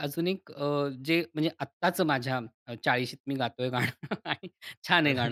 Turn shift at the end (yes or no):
no